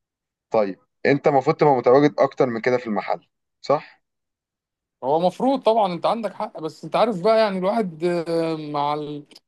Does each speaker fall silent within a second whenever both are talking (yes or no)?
yes